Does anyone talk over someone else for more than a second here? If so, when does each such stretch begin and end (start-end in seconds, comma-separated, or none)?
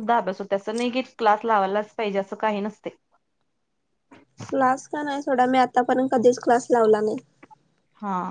none